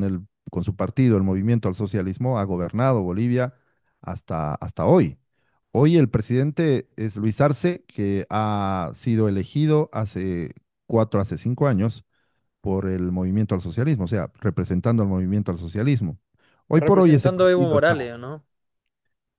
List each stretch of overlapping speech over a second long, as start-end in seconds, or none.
16.7-17.9